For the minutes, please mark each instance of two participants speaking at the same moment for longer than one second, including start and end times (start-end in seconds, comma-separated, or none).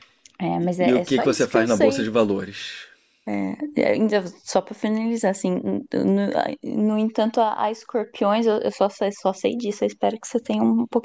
0.6-2.0